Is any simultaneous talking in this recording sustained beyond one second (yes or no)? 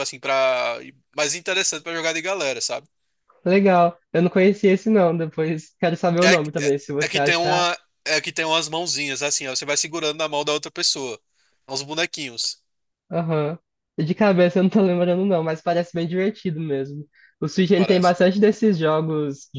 yes